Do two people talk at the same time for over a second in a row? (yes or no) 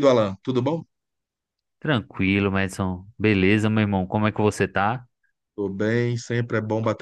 no